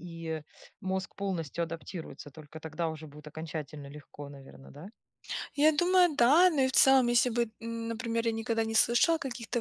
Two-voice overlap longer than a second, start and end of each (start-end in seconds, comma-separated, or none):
none